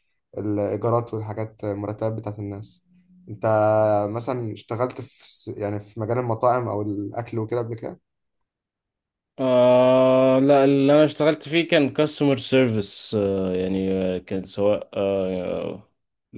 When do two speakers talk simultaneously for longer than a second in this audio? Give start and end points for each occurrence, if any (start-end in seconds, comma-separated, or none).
none